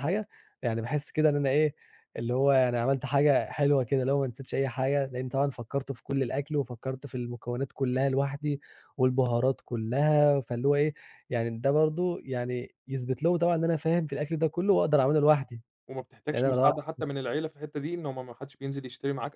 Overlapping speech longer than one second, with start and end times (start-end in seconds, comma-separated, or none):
none